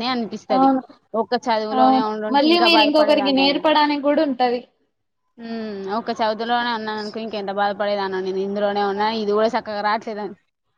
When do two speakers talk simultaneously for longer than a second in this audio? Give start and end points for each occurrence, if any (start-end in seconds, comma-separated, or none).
1.8-3.7